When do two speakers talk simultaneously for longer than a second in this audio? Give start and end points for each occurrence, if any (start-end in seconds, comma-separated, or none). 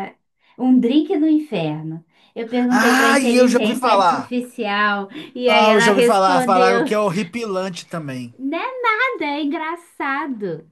2.7-4.3, 5.5-6.9